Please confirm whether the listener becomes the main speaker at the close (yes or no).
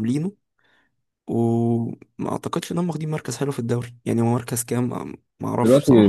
yes